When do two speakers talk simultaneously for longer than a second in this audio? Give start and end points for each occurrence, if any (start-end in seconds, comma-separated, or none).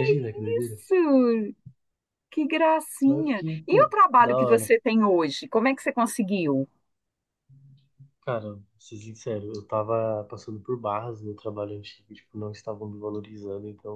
3.1-4.7